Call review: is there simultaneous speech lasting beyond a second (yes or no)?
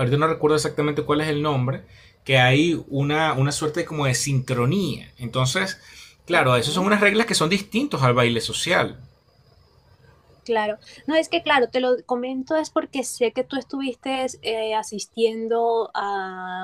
no